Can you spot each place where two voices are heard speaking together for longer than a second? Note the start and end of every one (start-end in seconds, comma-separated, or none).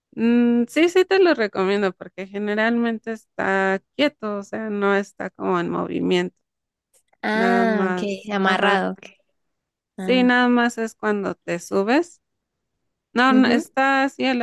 7.3-8.8